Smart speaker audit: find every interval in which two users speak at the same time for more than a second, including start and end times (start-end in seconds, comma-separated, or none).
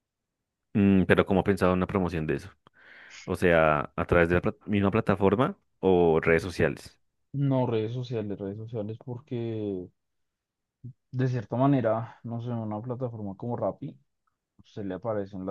none